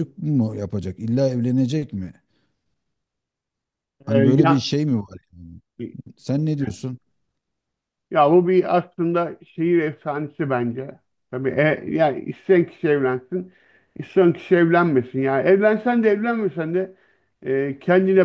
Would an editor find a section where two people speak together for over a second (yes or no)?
no